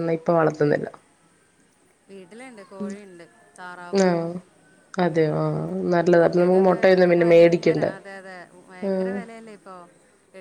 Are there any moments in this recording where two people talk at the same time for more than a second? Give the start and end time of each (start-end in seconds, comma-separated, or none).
6.2-7.9